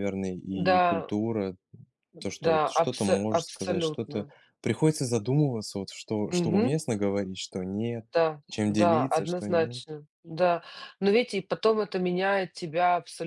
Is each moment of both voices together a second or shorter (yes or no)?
no